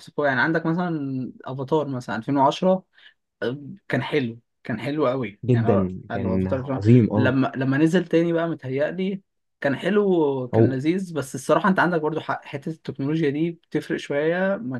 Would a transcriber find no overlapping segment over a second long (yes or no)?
no